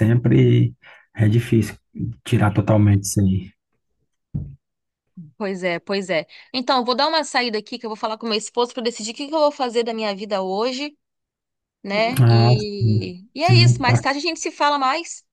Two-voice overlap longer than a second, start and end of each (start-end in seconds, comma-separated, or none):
12.2-14.0